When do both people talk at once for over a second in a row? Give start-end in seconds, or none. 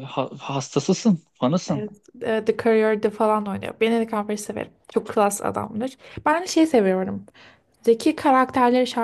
none